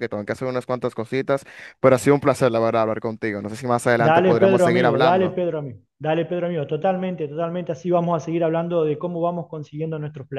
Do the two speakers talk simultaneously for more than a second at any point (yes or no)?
yes